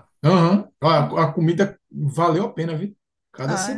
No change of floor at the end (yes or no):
no